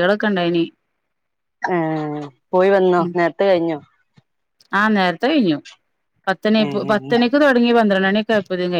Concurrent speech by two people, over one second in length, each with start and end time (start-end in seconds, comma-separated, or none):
none